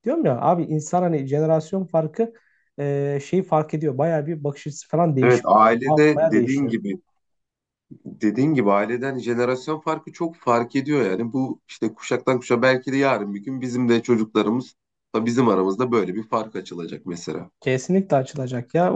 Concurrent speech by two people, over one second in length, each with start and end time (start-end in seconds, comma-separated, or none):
5.2-6.7